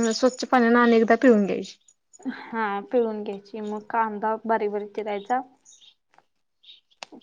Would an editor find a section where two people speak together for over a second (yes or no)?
no